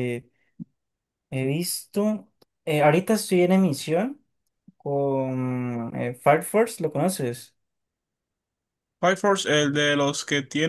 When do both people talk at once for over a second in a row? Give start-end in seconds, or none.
none